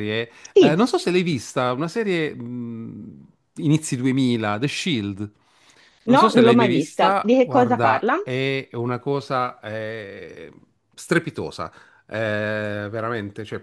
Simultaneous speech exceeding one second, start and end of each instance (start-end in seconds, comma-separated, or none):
6.2-8.2